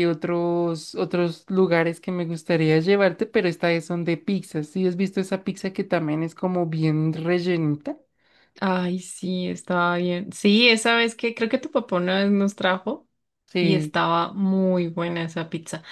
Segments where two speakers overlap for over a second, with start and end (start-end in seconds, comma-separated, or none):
none